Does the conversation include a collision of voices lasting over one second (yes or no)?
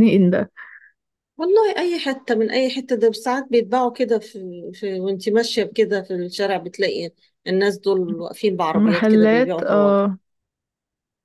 yes